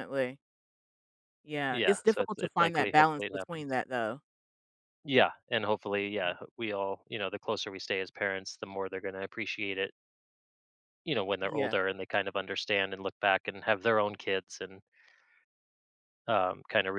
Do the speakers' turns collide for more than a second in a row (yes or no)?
yes